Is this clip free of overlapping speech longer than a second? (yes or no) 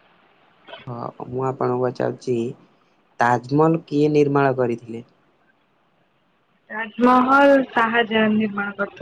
yes